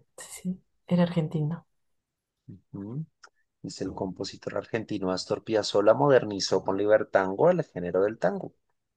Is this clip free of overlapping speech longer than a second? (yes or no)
yes